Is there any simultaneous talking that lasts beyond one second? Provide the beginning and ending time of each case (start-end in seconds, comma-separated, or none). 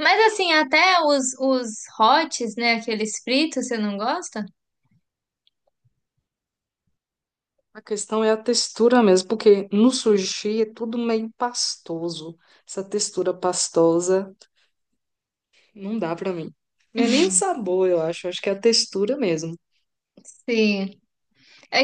none